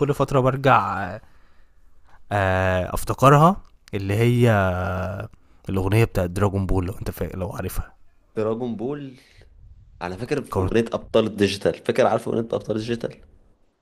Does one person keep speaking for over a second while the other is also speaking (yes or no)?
no